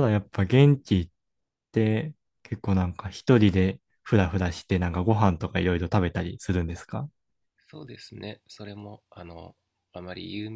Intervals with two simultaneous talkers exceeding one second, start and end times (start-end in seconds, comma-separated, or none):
none